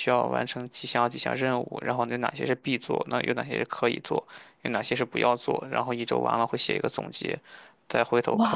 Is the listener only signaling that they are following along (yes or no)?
no